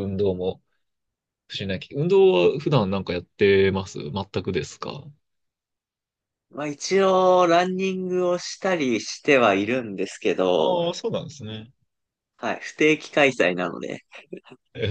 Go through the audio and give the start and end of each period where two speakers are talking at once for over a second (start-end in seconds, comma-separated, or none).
none